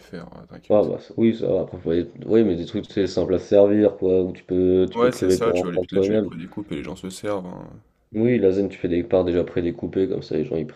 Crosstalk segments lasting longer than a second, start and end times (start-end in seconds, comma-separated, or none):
4.9-6.3